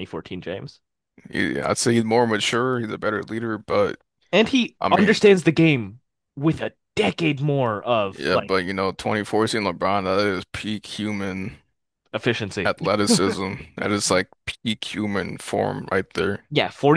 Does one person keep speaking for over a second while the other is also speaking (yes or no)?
no